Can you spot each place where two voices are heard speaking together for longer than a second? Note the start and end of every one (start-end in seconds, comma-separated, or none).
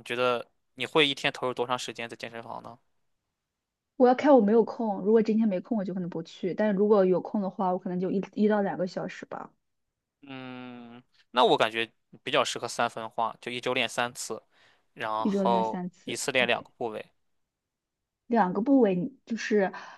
15.2-16.7